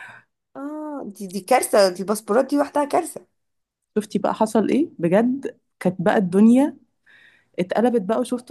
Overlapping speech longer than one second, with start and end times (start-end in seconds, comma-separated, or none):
none